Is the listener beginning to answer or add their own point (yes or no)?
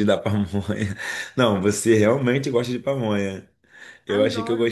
no